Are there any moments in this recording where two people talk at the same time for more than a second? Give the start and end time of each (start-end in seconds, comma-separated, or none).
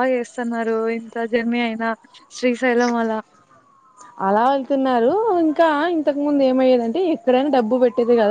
none